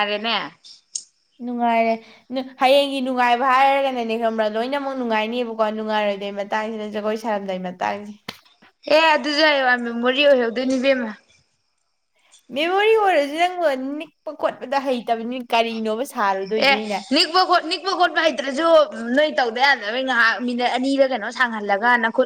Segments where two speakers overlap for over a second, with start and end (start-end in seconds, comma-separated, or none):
none